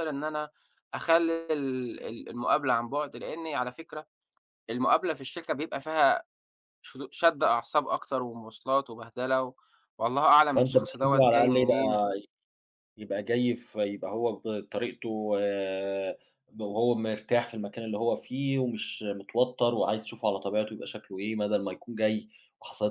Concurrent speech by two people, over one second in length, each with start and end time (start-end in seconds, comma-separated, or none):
10.5-11.9